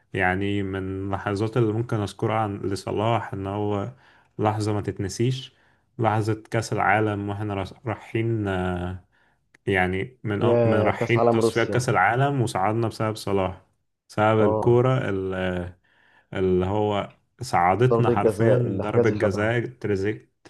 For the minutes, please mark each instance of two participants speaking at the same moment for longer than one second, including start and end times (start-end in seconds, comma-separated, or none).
10.4-11.9, 17.9-19.5